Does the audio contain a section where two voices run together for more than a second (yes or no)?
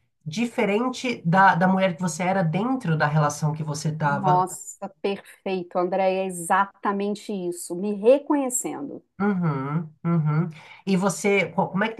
no